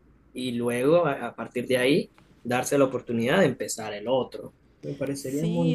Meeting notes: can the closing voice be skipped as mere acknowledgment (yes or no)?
no